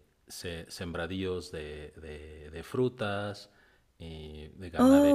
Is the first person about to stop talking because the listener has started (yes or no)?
no